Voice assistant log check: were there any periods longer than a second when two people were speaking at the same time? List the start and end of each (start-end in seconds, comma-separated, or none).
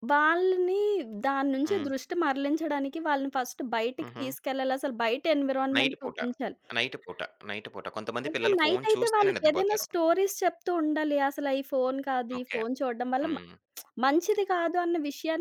8.3-9.8